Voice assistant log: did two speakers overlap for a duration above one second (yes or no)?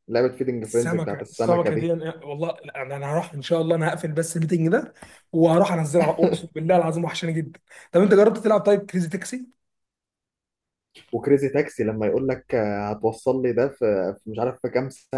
yes